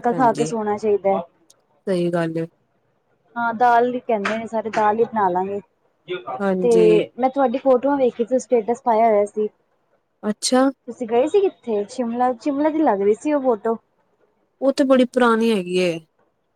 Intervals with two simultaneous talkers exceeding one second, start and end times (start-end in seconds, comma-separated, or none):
none